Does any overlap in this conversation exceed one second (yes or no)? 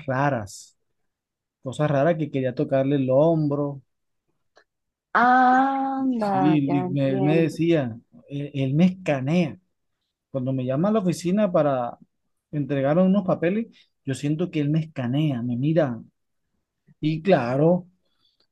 yes